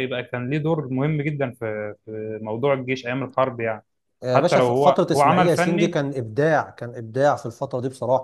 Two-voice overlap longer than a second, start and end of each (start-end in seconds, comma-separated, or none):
4.3-6.0